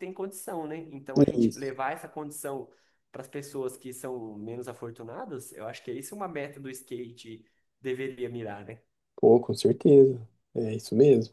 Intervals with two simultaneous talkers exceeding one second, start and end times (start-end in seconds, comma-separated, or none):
none